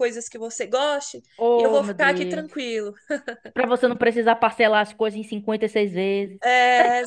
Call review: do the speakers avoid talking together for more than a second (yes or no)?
no